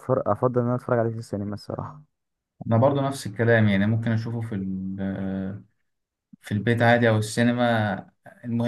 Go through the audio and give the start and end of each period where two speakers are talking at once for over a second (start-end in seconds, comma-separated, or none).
none